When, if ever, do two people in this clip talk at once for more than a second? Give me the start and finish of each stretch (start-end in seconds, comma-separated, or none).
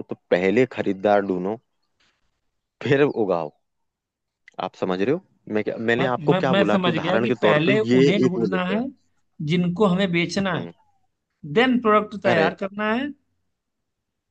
6.0-8.8